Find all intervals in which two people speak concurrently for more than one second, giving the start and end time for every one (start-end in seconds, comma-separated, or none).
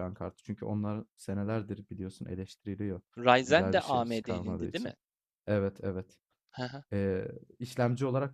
3.5-4.9